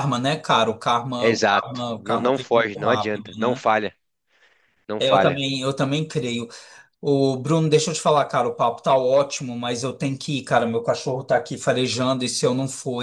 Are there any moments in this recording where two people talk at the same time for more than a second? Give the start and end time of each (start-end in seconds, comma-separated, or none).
1.2-3.6